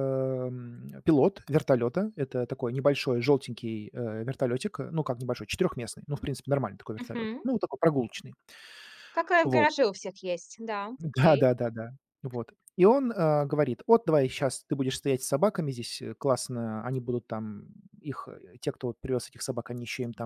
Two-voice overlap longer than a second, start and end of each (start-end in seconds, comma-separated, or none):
none